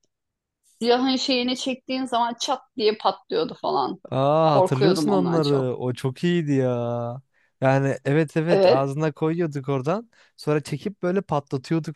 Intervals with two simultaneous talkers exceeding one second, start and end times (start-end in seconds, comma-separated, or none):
4.5-5.8